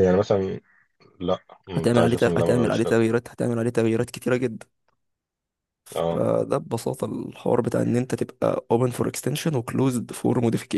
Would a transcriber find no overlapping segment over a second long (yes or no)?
no